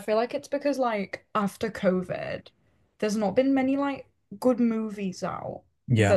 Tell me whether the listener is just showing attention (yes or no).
yes